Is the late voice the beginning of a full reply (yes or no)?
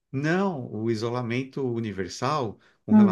no